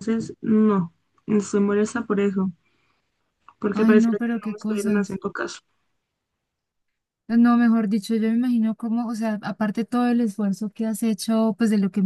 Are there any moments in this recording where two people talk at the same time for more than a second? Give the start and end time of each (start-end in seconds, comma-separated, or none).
3.7-5.2